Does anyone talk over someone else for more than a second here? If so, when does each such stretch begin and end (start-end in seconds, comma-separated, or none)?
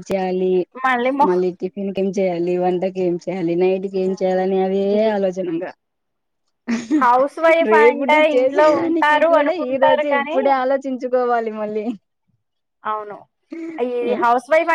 7.7-10.4